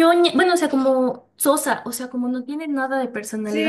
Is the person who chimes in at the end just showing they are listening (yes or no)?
no